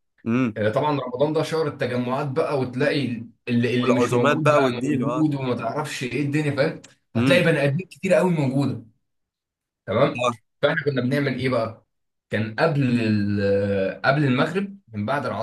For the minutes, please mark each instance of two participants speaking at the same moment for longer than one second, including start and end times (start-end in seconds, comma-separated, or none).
3.8-5.3